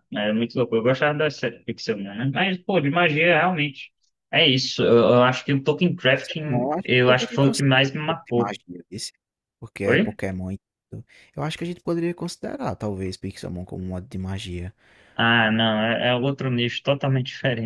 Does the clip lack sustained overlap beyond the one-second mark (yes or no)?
no